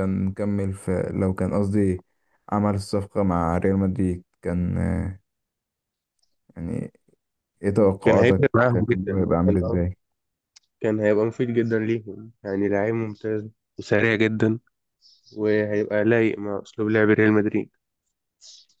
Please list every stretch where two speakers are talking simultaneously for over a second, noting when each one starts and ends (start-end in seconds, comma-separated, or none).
8.0-9.6